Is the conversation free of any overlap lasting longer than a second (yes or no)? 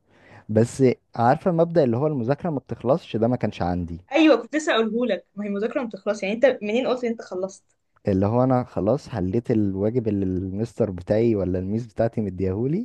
yes